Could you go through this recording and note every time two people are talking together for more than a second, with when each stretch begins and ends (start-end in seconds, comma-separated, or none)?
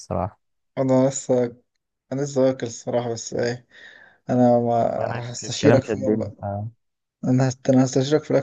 5.0-6.3